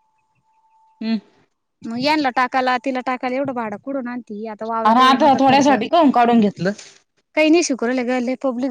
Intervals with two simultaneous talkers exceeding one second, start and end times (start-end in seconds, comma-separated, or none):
none